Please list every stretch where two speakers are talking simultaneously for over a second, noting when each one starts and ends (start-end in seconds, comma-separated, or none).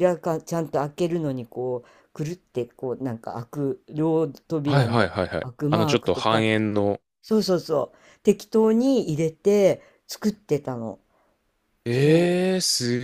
4.6-6.5